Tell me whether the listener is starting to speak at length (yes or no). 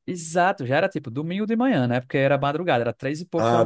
no